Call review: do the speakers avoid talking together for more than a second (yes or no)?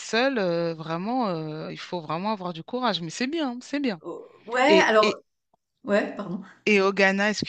yes